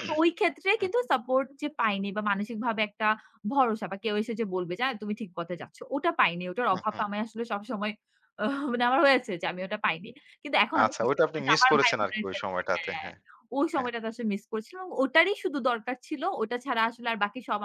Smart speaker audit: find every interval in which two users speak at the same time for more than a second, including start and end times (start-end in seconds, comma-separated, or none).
10.8-13.1